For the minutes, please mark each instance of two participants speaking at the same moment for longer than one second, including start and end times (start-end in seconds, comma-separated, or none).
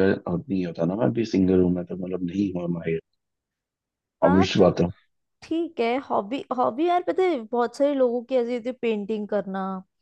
none